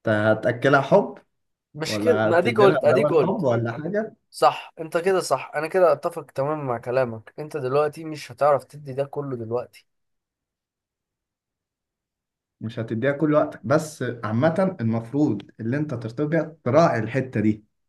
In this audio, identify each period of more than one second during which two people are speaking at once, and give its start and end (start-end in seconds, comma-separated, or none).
1.9-3.5